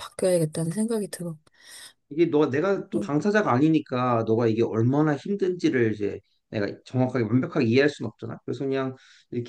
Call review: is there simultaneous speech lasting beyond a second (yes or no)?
no